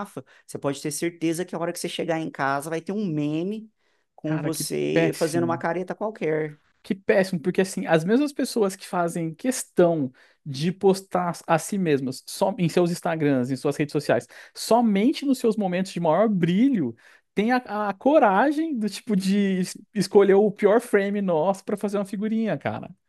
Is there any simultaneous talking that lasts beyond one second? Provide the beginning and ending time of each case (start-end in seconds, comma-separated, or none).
4.2-5.6